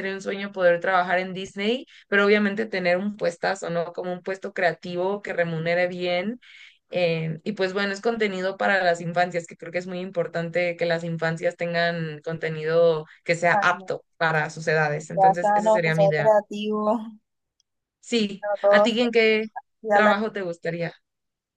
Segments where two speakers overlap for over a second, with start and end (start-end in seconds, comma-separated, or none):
15.1-16.4